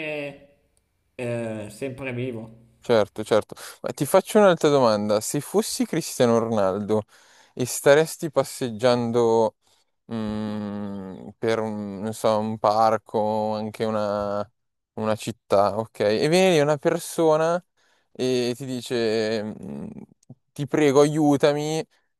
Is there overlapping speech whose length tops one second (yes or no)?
no